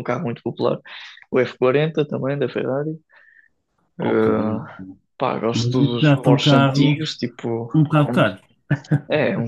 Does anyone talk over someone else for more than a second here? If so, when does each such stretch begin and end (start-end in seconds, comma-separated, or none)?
5.5-7.0